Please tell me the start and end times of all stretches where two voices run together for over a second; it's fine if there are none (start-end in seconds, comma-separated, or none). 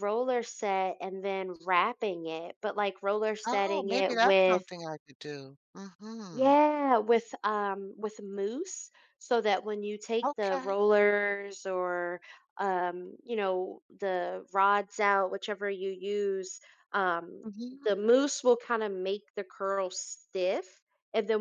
3.5-4.7